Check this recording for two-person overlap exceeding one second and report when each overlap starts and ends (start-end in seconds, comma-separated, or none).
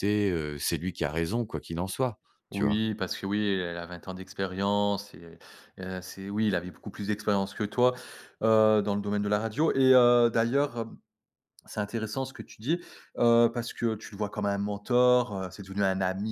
none